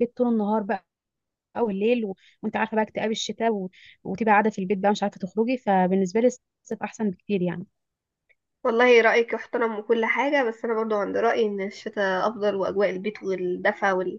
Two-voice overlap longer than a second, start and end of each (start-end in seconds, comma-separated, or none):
none